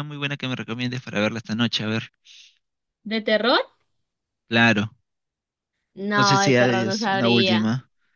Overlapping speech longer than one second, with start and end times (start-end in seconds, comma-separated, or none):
6.2-7.7